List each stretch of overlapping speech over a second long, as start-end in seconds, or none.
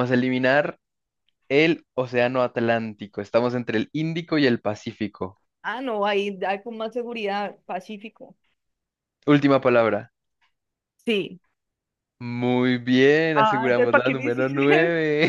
13.3-14.6